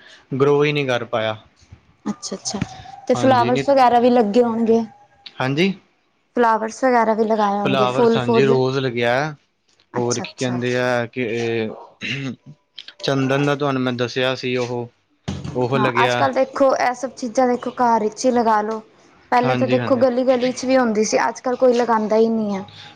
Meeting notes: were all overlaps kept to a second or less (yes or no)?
yes